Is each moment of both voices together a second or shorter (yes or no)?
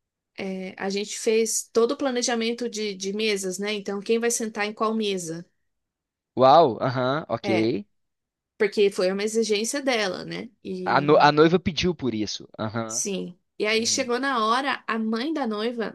yes